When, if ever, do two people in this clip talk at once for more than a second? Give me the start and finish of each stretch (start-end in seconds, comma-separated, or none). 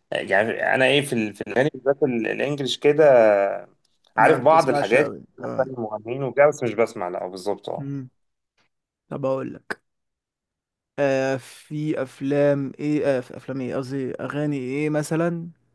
4.2-5.7